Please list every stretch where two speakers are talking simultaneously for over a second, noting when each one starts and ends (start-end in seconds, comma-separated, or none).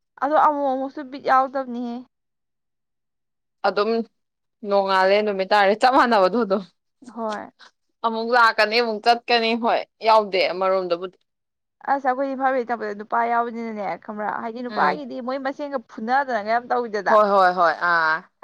none